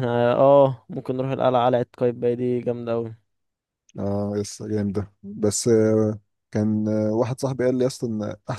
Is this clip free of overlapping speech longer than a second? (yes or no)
yes